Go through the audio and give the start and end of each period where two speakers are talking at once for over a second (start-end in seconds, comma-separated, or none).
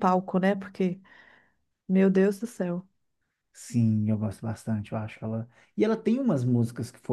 none